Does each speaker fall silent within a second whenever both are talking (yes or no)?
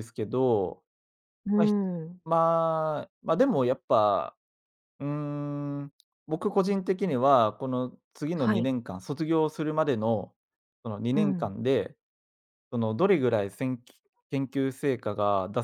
yes